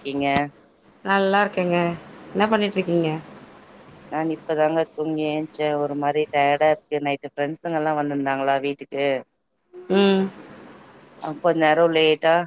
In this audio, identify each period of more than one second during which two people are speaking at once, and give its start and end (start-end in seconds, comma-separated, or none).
none